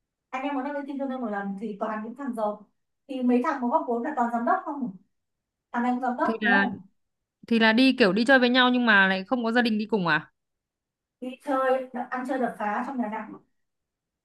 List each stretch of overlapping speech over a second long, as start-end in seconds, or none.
none